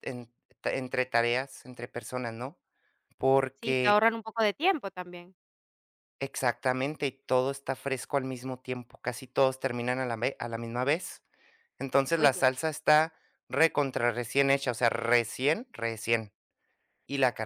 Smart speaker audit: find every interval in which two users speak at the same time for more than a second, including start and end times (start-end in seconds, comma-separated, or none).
none